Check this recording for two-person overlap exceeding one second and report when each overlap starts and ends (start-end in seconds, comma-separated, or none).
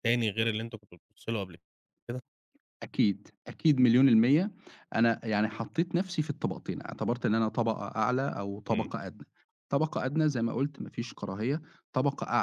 none